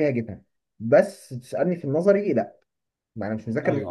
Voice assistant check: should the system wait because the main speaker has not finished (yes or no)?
yes